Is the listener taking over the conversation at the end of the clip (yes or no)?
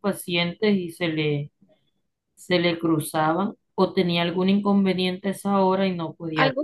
yes